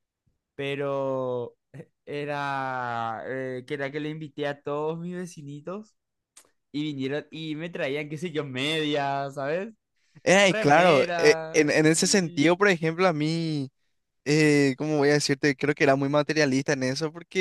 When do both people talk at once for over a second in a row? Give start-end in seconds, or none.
10.5-12.5